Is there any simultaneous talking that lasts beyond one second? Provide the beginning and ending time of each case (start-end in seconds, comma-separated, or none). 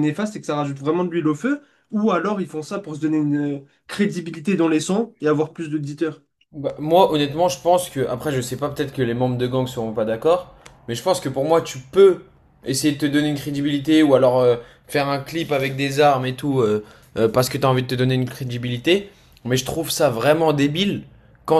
none